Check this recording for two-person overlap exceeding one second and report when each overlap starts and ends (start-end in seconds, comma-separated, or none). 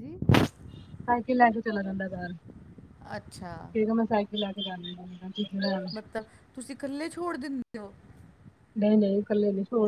none